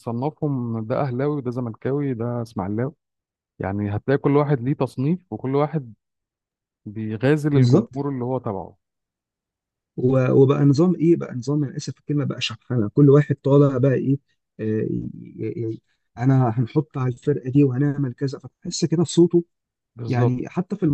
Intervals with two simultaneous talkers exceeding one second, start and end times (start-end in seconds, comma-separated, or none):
none